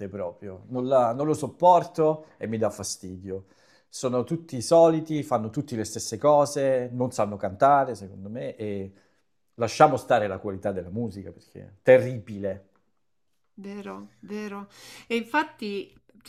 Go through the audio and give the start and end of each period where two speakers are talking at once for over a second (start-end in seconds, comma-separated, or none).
none